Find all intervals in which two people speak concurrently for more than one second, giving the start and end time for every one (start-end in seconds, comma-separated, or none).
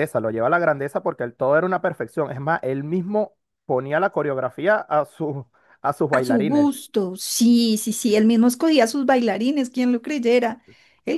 none